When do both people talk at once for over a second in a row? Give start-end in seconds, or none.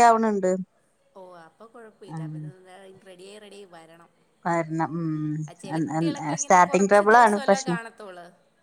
6.0-7.8